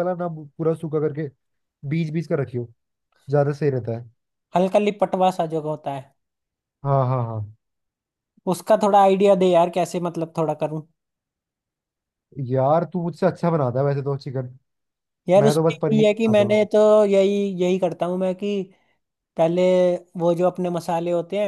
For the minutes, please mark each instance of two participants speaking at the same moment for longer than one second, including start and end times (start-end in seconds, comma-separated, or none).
15.4-16.7